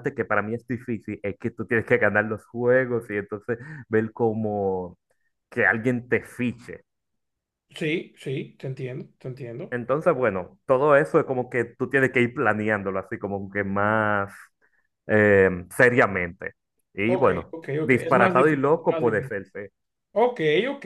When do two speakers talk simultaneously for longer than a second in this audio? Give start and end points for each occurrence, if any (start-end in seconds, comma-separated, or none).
17.1-19.4